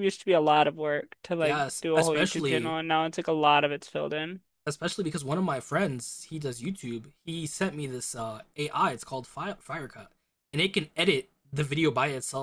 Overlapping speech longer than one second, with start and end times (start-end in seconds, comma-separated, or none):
1.4-2.8